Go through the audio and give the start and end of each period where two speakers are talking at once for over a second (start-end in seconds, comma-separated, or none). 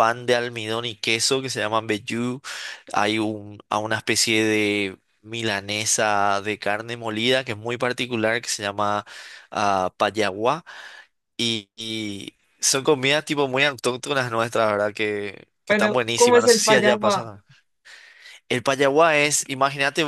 15.7-17.2